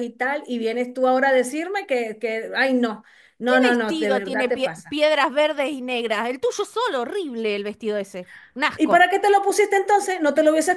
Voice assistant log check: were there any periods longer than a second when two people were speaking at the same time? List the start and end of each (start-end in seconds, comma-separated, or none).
3.5-5.0